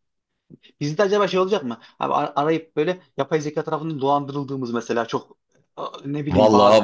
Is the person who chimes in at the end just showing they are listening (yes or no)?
no